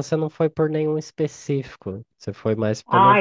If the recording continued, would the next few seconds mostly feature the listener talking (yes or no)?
yes